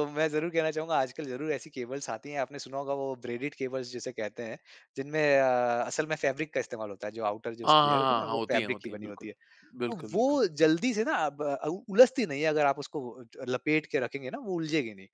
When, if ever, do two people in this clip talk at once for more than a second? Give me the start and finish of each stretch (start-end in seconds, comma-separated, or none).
7.7-9.3